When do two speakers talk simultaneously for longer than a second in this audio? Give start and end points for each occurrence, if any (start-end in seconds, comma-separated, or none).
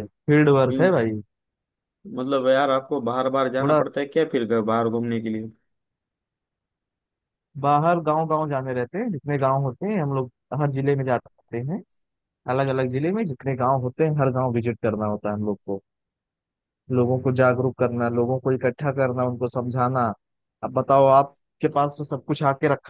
none